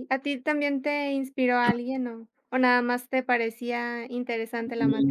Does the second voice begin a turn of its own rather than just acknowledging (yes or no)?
yes